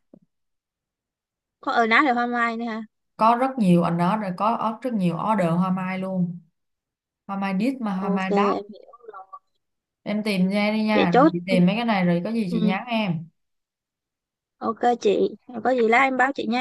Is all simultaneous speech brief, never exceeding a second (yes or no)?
yes